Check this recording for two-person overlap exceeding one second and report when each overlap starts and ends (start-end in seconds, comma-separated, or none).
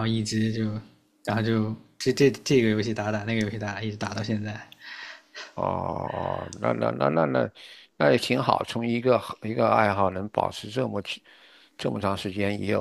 none